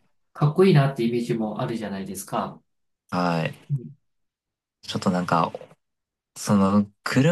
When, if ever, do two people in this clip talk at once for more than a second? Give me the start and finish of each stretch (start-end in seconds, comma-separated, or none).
none